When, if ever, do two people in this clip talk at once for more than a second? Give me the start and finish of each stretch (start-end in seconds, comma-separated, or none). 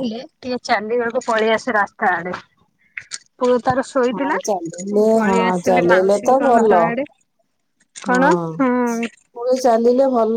4.1-6.7